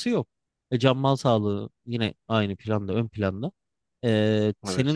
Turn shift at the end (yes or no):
no